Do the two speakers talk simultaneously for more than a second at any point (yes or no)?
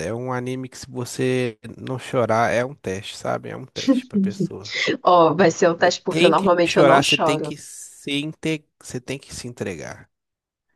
yes